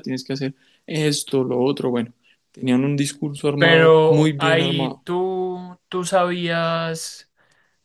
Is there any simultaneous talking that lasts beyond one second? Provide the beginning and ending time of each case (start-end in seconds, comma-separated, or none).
3.6-5.0